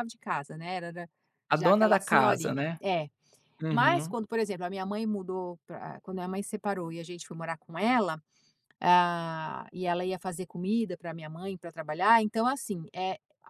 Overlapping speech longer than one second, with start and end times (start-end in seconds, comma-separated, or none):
1.6-2.8